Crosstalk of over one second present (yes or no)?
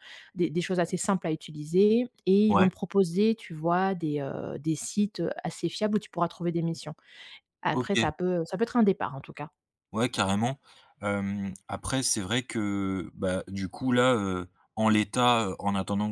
no